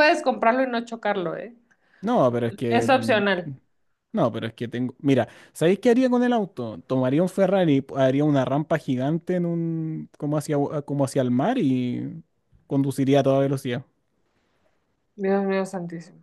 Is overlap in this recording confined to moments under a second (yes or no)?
yes